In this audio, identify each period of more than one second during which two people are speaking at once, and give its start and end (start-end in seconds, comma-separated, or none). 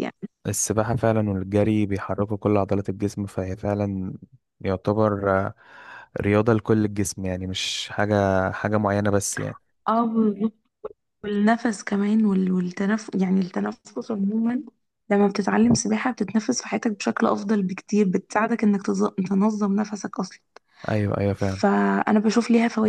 none